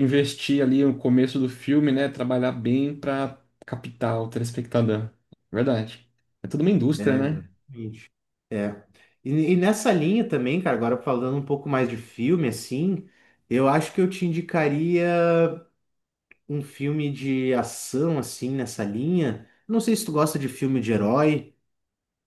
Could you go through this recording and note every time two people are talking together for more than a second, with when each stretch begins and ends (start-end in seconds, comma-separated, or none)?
none